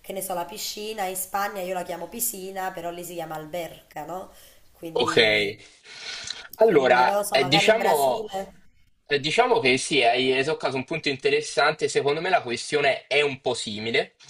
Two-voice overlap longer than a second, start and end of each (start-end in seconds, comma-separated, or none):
6.7-8.3